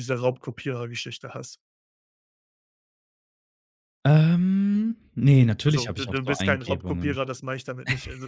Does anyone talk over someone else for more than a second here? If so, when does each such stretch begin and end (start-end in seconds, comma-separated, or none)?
5.7-7.2